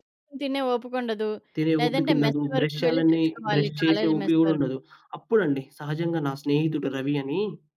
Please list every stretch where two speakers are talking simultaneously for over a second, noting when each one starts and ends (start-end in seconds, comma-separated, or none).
1.8-4.7